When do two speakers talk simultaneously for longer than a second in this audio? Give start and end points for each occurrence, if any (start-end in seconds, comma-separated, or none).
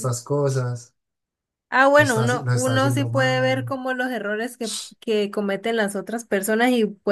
2.0-3.6